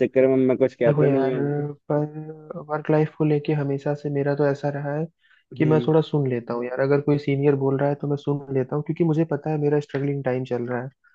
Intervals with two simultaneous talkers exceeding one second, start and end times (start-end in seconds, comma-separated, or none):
none